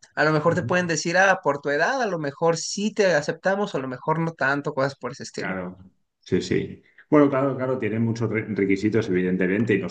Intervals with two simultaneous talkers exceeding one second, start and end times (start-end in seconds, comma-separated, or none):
none